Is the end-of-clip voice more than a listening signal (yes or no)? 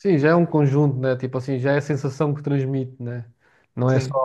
no